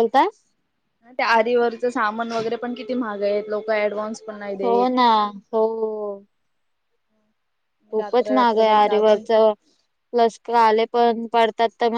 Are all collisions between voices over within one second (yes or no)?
no